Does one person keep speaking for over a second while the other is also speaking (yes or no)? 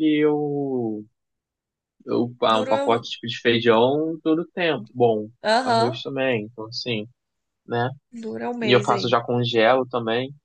no